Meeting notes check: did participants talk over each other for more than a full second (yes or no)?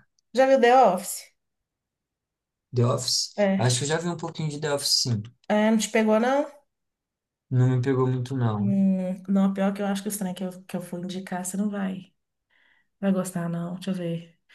no